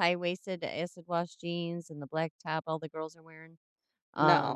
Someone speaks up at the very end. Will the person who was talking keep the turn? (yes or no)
no